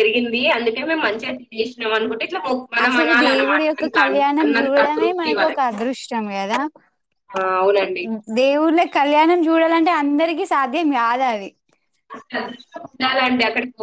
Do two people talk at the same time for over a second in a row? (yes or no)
yes